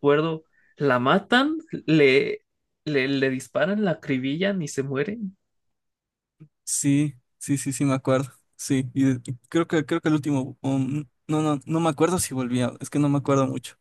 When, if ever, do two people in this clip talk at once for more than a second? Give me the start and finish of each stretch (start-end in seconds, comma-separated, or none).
none